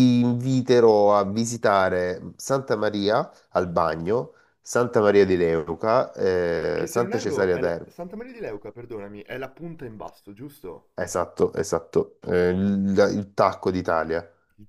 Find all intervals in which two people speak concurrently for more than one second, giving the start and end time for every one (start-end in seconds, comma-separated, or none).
6.7-7.9